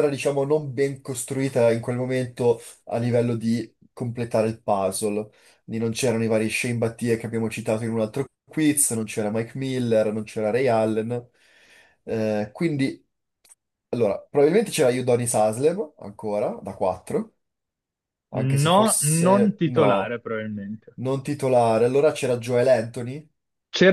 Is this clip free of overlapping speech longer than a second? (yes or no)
no